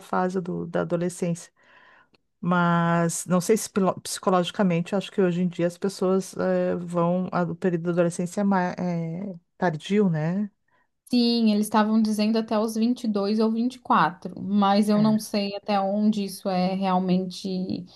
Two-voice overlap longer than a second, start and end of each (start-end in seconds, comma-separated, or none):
none